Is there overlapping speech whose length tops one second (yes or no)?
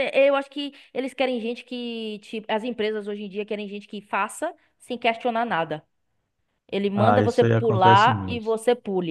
yes